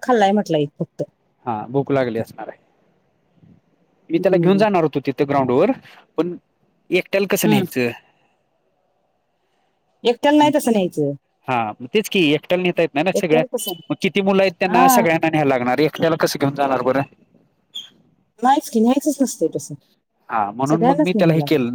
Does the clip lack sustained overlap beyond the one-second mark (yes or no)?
yes